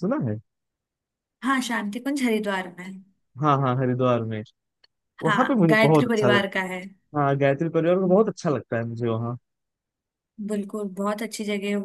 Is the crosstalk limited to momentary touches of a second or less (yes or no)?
no